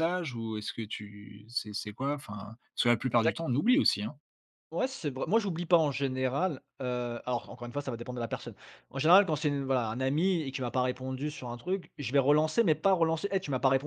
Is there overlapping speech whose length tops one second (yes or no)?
no